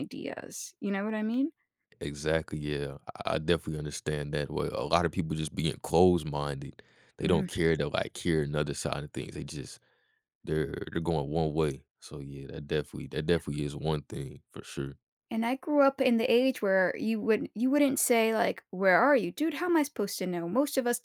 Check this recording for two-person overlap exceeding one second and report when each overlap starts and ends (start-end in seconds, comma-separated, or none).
none